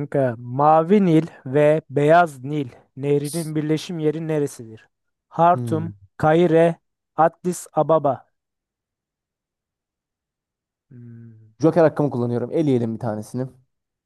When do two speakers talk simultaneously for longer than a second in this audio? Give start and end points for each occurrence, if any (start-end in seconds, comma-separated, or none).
none